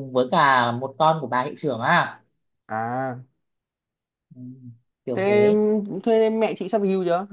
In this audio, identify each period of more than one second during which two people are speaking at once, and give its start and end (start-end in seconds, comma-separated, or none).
none